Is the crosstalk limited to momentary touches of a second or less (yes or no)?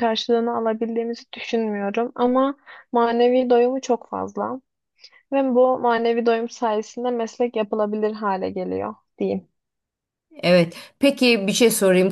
yes